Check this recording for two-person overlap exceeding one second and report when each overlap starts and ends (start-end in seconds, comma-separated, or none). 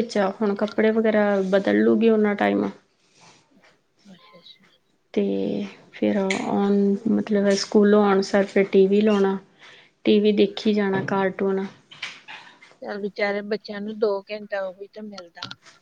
none